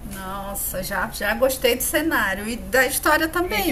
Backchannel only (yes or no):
no